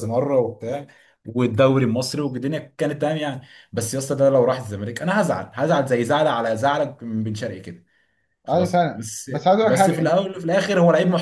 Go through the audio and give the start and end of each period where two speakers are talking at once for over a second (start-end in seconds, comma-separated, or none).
8.5-10.2